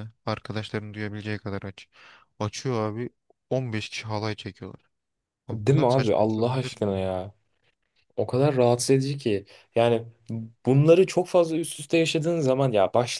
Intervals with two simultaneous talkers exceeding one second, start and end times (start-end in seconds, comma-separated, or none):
5.5-6.9